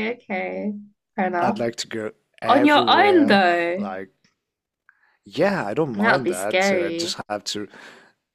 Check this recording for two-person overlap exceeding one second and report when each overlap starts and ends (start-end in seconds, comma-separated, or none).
2.5-3.9, 5.9-7.2